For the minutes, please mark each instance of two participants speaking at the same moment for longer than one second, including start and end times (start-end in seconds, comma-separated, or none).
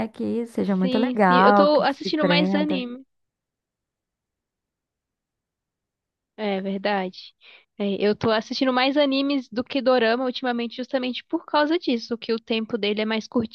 0.8-2.9